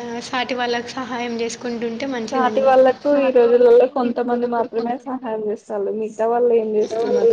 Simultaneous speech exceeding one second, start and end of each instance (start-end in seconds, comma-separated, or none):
3.5-5.7